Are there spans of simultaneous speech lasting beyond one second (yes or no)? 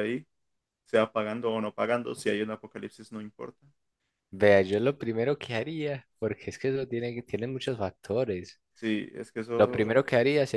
no